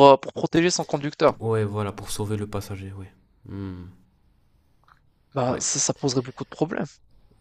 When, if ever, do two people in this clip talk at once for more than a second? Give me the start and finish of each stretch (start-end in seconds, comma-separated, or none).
none